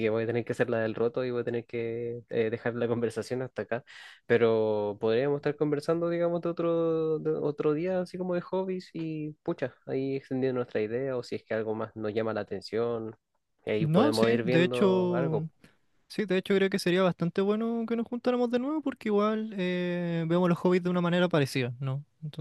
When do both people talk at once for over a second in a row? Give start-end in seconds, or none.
13.8-15.5